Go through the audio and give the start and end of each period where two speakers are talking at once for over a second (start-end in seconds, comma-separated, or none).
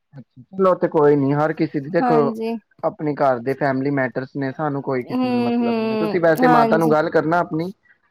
5.1-6.9